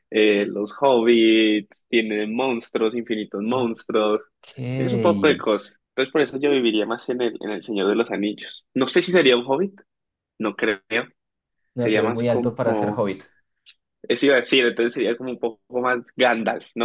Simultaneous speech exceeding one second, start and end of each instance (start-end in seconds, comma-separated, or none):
11.8-13.1